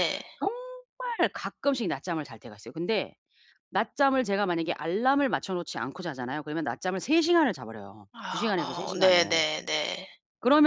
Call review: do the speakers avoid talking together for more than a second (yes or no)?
no